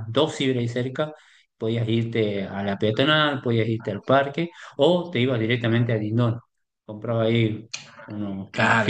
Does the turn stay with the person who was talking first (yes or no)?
no